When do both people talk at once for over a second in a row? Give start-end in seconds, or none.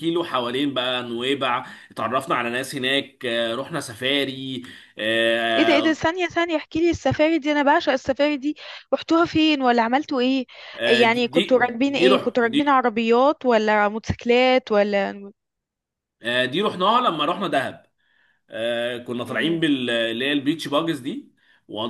11.0-12.6